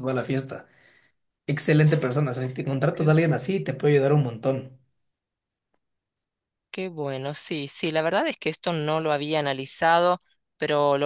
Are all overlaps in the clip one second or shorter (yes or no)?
yes